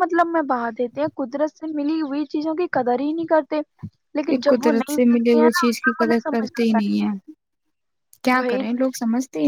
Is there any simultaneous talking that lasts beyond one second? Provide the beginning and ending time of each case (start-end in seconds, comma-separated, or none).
4.3-6.8